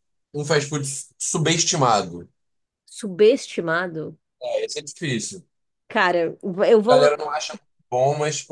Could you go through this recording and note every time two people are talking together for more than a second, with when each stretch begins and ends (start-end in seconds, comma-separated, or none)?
none